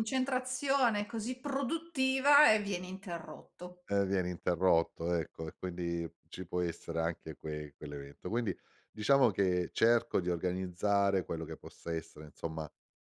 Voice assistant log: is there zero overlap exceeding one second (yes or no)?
yes